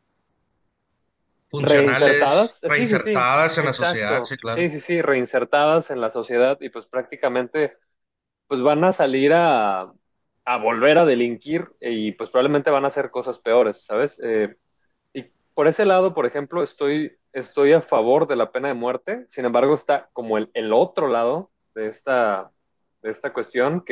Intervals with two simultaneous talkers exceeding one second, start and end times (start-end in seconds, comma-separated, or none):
1.5-4.7